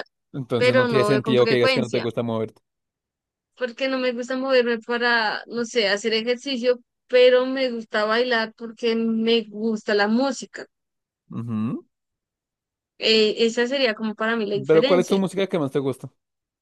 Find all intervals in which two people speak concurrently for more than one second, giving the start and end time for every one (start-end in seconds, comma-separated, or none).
0.6-2.0